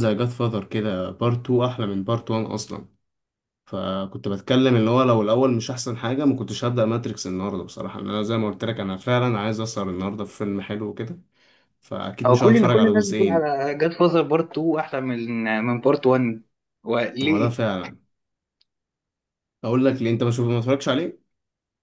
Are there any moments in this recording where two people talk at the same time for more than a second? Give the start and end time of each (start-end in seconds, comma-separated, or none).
12.3-13.5